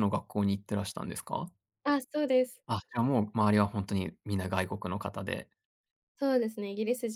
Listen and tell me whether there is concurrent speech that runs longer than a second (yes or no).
no